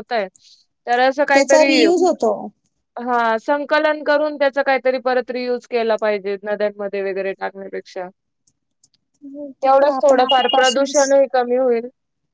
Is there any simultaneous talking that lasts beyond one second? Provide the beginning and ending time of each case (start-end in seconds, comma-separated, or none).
9.7-10.9